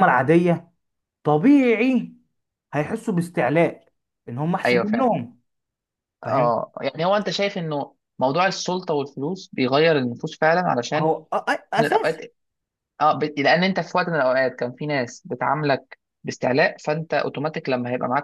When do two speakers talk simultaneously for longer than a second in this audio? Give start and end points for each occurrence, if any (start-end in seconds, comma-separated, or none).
none